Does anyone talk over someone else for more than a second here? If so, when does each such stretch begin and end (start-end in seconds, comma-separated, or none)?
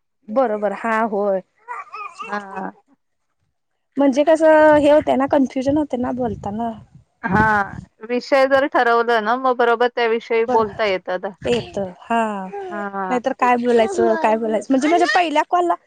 none